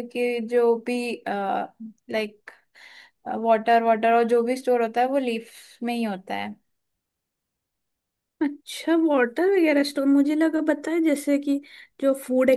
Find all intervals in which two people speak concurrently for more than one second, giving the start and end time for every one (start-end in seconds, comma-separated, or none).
none